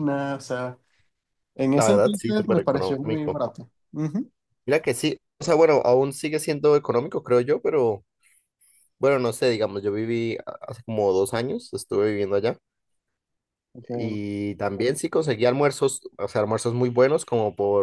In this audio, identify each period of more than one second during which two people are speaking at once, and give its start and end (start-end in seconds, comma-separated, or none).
1.7-3.4